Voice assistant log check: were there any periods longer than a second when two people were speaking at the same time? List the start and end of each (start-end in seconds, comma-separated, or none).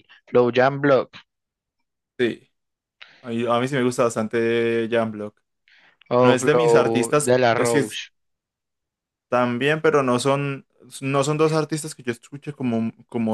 6.2-8.0